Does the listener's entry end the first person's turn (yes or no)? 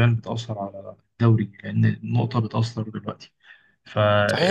yes